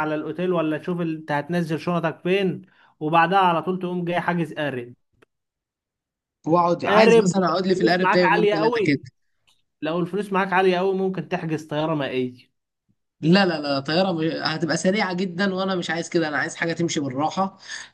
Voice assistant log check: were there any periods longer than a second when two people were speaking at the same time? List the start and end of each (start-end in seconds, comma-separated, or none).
6.9-9.0